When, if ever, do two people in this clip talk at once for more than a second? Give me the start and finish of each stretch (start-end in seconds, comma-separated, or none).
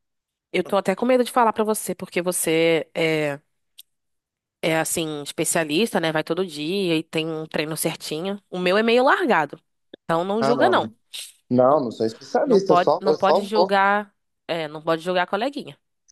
12.4-13.7